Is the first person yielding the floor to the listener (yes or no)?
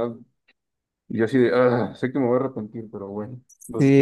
yes